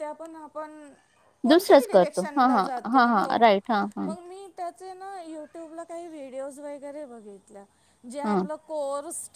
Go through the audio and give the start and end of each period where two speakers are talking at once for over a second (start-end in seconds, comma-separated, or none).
1.5-3.3